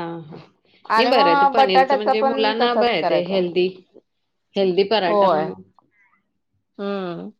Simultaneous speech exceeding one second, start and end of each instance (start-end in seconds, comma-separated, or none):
1.0-3.4